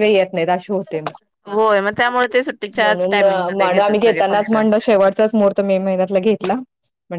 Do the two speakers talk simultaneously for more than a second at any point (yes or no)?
yes